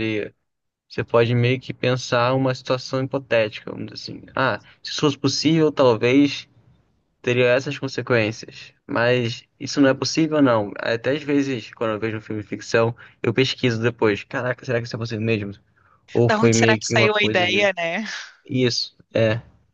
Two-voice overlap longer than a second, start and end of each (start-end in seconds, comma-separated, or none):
16.2-17.7